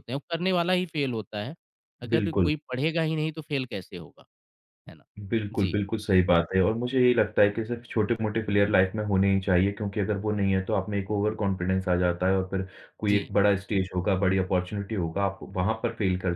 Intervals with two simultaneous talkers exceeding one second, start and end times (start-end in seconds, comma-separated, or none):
none